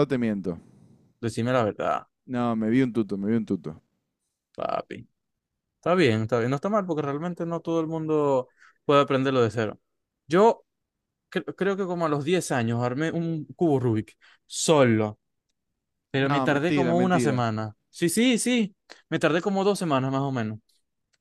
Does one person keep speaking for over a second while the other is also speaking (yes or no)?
yes